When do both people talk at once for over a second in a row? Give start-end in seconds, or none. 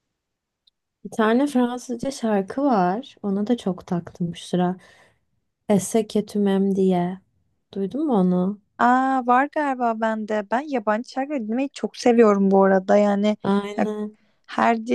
none